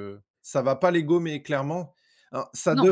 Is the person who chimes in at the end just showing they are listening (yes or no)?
yes